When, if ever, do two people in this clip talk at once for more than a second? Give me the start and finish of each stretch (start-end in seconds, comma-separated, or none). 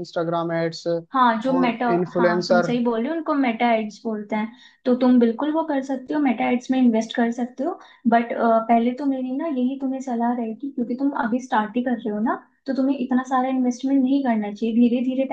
1.1-2.7